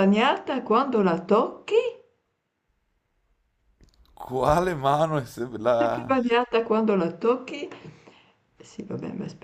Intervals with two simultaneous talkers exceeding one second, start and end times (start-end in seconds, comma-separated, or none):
none